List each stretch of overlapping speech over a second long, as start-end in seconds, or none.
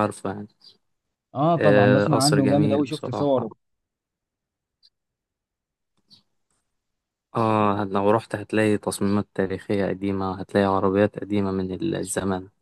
1.6-3.5